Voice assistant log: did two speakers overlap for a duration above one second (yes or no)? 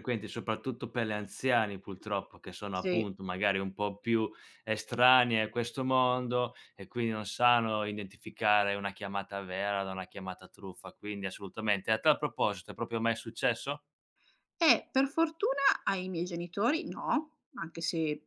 no